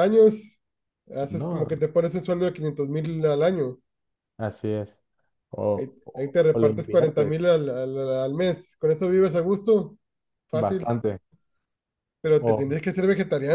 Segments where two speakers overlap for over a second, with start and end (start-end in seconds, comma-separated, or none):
5.7-7.3